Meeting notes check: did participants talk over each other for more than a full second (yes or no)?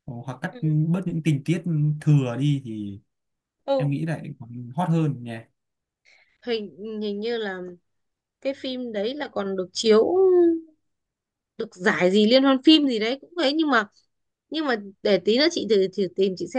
no